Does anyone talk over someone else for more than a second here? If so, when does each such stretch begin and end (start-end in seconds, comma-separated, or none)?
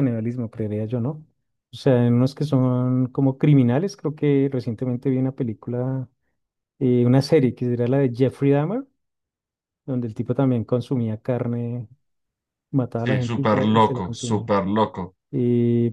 12.9-14.5